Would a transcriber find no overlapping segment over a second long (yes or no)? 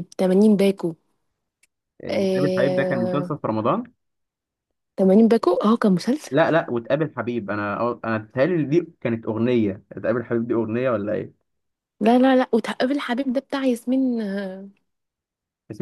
no